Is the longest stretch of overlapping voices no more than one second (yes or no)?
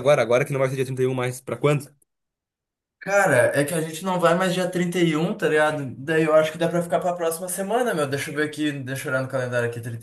yes